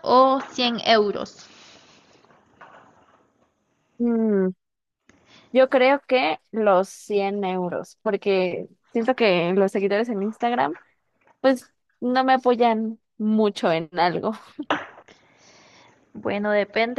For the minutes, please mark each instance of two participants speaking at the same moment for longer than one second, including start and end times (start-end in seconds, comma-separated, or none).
none